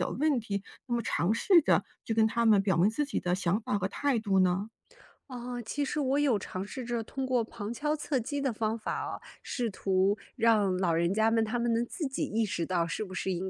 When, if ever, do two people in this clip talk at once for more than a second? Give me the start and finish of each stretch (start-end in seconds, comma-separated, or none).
none